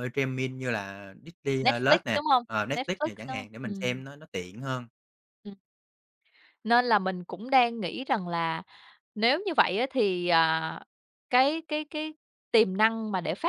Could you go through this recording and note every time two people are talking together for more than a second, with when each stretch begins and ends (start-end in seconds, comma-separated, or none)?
1.6-4.0